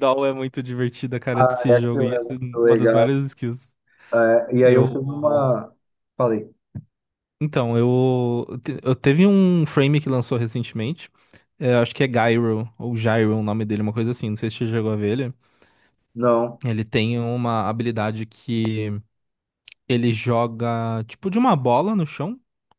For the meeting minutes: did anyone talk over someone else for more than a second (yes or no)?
yes